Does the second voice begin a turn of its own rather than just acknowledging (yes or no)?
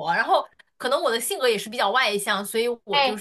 yes